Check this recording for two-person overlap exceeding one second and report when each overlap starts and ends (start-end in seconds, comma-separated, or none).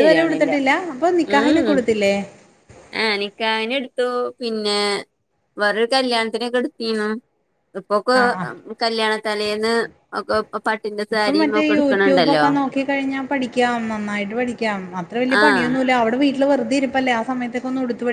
11.1-12.4